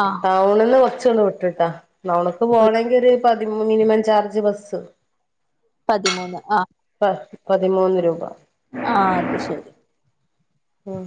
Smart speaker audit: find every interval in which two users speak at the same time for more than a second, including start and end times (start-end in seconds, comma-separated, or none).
none